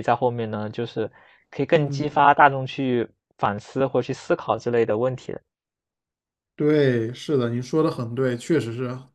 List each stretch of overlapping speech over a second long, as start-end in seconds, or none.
none